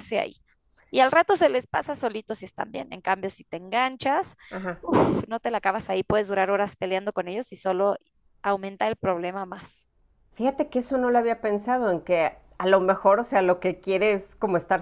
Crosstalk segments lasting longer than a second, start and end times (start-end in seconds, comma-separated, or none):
none